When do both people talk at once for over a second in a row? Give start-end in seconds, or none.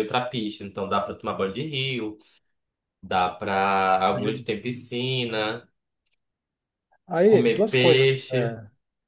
7.2-8.6